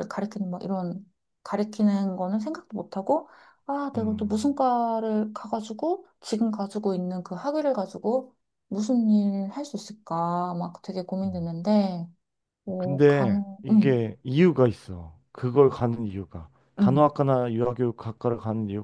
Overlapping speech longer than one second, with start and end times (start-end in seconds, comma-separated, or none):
12.8-14.1